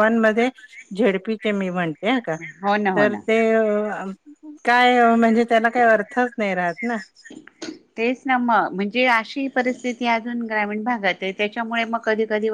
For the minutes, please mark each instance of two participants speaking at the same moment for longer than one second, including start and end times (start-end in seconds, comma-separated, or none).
none